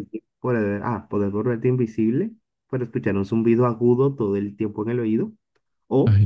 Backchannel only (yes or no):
yes